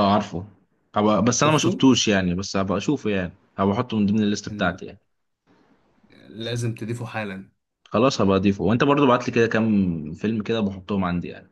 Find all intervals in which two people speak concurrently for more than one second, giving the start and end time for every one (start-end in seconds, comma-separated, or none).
none